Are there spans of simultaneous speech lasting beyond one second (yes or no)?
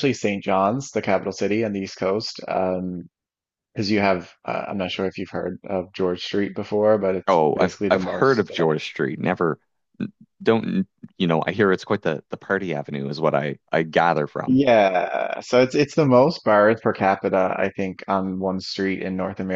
yes